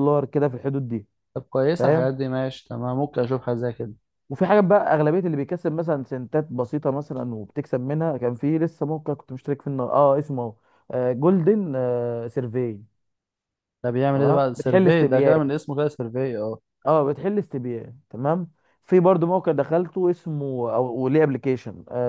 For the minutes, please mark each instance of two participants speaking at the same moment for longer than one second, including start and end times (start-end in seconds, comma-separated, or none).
14.1-15.3